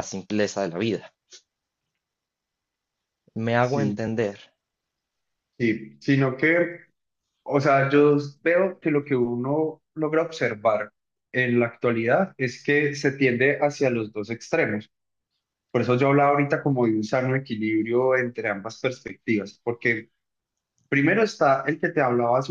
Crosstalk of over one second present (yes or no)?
no